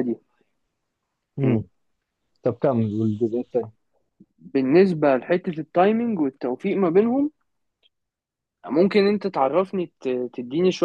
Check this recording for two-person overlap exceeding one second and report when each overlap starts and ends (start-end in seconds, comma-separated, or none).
none